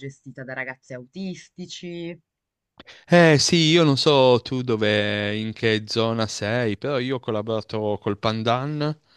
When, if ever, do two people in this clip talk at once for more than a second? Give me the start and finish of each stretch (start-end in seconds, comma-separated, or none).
none